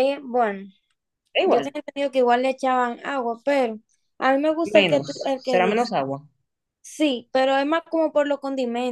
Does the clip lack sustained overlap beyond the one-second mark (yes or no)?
no